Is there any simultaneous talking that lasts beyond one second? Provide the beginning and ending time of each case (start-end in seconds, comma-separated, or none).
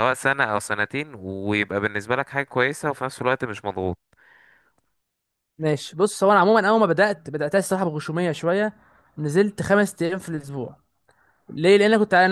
none